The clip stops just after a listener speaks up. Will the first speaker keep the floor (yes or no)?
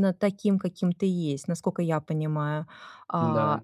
yes